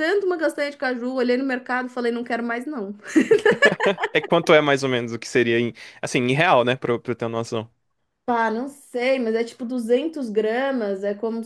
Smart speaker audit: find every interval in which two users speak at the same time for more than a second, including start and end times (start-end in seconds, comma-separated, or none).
none